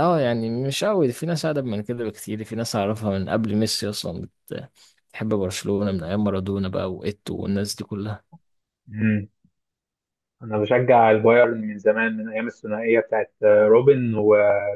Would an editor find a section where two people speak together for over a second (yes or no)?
no